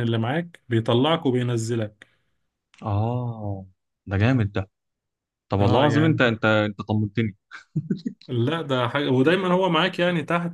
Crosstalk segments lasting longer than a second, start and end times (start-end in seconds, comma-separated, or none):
none